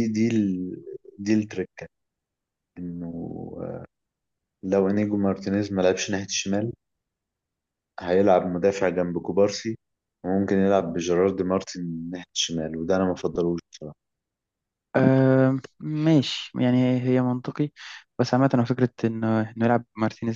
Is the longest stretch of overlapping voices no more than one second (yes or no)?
yes